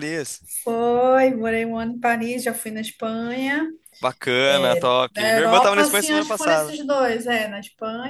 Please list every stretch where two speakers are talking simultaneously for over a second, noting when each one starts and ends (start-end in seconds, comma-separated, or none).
5.1-6.8